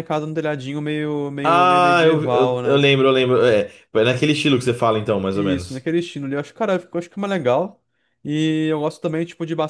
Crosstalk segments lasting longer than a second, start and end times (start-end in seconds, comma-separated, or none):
1.4-2.8